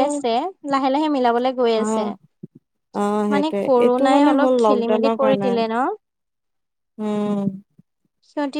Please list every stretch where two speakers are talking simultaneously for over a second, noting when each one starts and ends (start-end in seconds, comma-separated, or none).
3.3-5.5